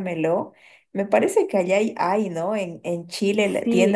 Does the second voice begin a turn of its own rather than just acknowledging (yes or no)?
yes